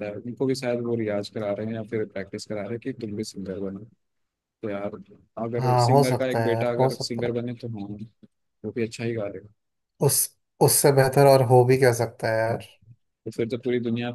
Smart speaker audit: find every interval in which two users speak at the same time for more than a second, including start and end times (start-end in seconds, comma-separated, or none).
5.6-7.3